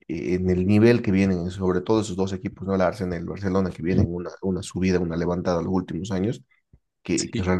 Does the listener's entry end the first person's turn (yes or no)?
no